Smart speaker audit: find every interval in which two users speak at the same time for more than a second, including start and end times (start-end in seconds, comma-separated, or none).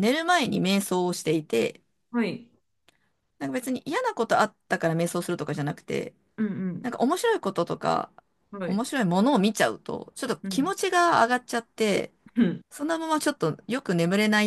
none